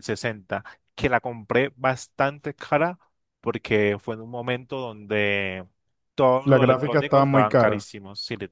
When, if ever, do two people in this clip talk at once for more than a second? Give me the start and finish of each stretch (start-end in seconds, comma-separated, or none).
6.4-8.0